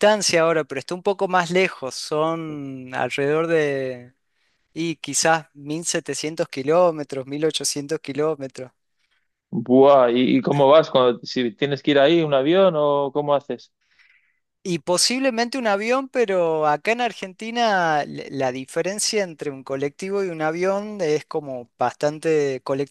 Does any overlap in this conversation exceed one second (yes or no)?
no